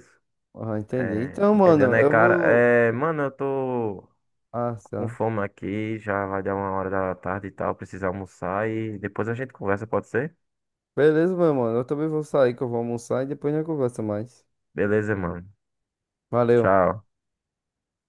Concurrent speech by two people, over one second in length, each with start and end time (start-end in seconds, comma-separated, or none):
1.0-2.7